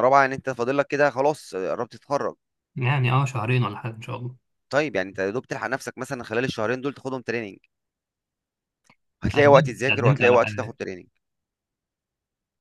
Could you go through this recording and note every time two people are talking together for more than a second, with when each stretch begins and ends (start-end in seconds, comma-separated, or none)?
9.3-10.8